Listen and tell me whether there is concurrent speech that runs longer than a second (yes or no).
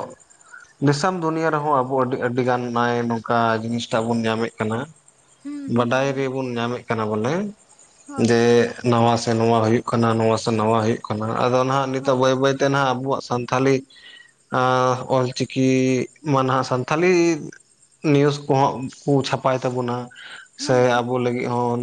no